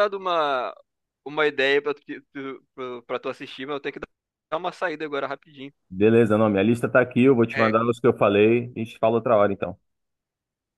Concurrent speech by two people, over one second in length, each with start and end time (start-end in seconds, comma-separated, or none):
none